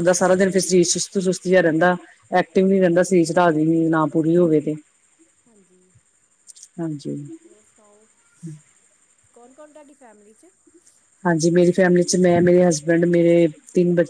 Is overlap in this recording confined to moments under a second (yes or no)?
yes